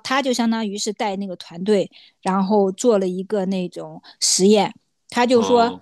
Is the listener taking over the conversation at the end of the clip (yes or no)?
no